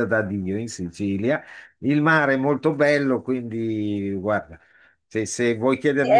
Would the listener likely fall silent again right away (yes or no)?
no